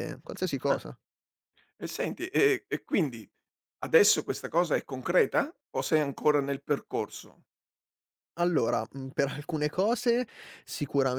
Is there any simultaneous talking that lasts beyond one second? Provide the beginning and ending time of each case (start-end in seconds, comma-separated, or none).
none